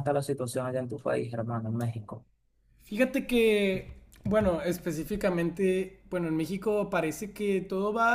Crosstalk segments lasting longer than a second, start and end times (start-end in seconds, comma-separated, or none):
none